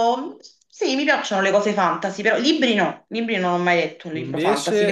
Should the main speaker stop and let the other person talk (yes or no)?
yes